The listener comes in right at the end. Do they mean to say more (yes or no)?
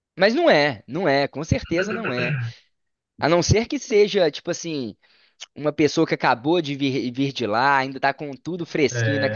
no